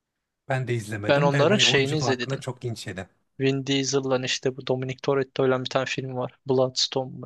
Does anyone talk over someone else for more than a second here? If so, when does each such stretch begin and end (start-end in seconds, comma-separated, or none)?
1.1-2.4